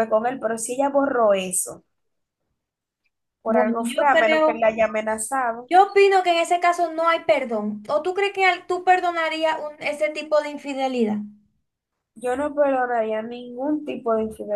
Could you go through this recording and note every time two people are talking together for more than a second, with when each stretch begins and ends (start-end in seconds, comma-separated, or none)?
3.5-4.7